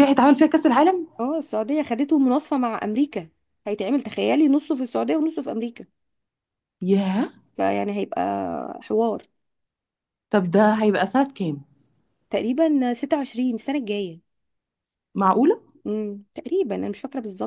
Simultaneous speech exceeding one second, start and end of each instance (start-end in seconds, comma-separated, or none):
none